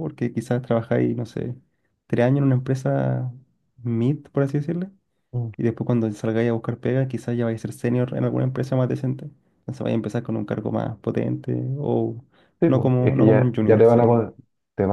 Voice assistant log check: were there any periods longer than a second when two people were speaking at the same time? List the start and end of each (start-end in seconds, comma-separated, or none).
12.7-14.0